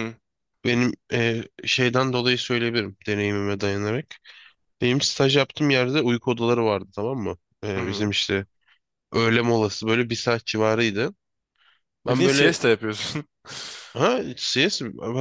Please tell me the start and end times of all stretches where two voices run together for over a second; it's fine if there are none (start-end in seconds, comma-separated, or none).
none